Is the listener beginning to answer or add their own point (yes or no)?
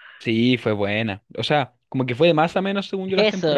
yes